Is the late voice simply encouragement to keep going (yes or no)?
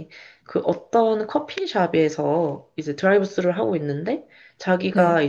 yes